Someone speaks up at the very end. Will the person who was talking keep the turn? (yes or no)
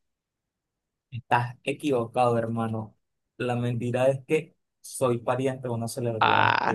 no